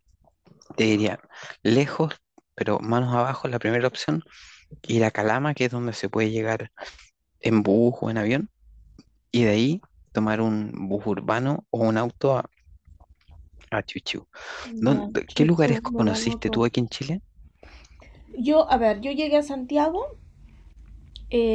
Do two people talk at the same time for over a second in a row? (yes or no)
yes